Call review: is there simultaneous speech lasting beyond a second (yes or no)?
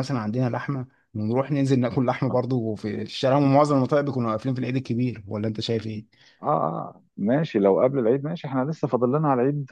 no